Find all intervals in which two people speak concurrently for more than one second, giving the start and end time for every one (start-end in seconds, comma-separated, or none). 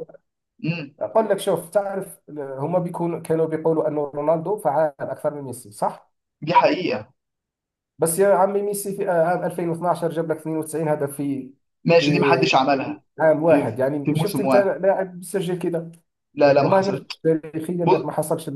13.4-14.8